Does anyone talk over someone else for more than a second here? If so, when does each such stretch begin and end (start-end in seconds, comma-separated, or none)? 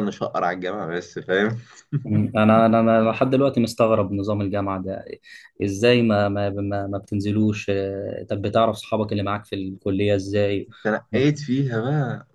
none